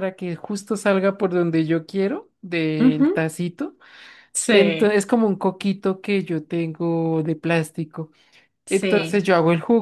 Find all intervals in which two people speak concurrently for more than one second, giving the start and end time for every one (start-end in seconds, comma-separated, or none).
none